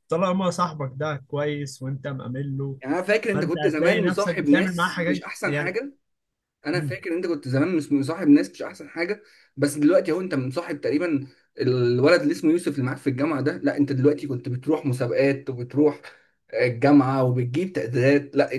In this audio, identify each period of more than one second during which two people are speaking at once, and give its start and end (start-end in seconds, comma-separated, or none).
3.2-5.8